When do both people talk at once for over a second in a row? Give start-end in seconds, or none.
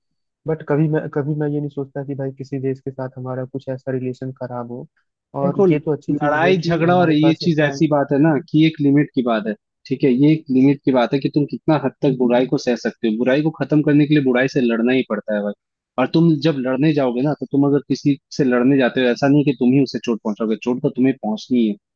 5.4-7.7